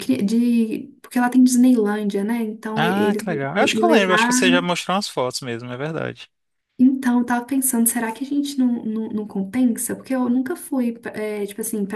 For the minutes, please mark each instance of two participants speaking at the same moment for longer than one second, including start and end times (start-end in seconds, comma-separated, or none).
2.7-4.7